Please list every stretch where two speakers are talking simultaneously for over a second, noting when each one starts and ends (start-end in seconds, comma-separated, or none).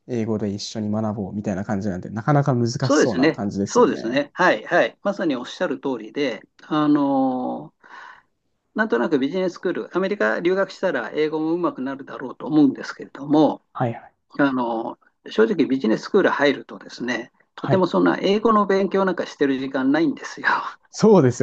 2.8-4.2